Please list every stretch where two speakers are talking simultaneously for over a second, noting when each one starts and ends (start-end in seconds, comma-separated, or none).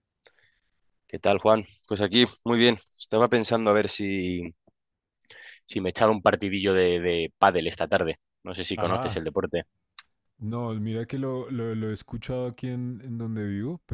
none